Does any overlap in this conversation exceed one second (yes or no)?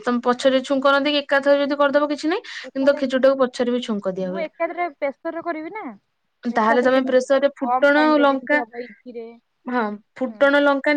yes